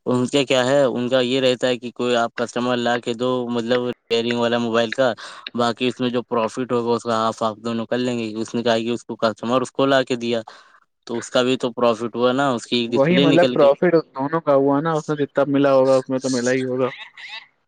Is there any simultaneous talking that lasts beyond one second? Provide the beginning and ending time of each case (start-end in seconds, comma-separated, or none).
none